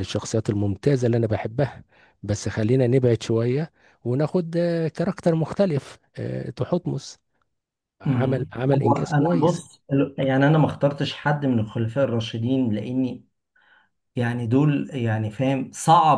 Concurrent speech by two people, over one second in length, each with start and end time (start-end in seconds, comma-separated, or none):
8.1-9.6